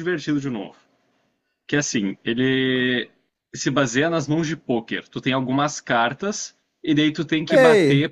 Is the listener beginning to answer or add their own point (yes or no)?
yes